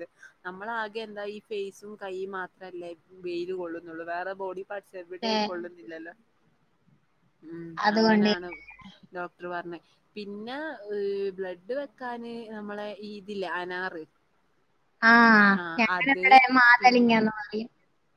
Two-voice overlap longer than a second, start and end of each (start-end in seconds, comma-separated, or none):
none